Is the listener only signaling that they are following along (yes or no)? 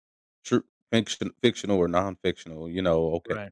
yes